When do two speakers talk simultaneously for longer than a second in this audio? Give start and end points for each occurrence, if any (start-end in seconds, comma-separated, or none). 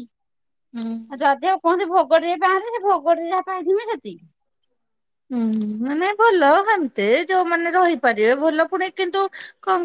none